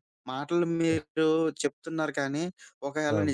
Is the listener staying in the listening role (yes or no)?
yes